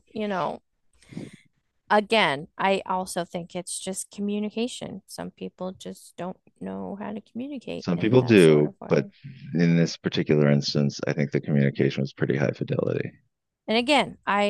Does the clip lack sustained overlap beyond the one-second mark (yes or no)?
no